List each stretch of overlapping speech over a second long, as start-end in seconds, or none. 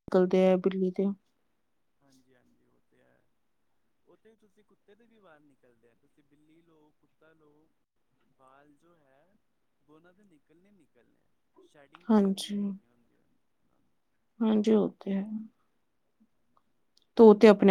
none